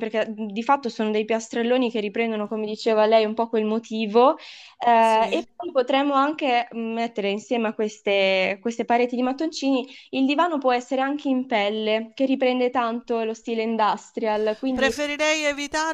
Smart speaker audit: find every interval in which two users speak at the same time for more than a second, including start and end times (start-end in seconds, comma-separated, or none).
none